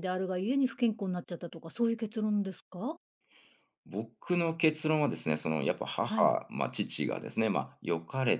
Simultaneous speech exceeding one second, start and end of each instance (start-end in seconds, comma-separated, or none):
none